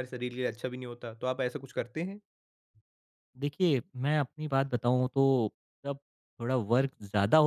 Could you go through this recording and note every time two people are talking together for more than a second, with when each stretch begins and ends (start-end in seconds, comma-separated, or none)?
none